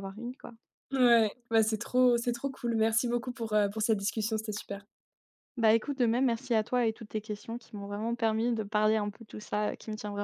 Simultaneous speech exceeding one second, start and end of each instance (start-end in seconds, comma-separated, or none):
none